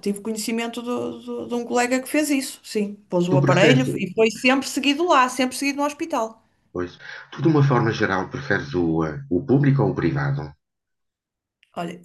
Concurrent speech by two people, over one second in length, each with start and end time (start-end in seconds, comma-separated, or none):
none